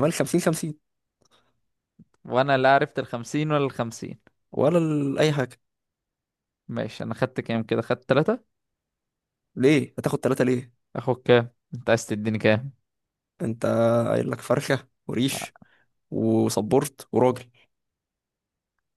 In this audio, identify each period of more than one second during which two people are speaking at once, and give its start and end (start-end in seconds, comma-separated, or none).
none